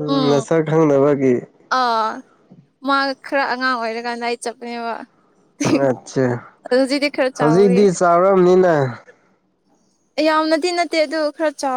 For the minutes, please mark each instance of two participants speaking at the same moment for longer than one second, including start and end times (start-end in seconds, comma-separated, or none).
none